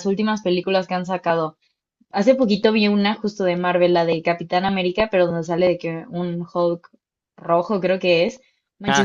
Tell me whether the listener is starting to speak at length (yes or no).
no